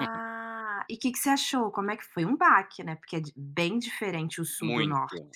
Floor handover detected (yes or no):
yes